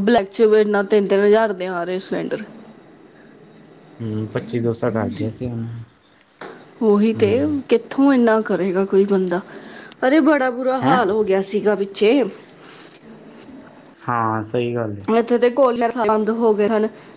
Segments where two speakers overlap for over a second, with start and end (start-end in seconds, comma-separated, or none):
none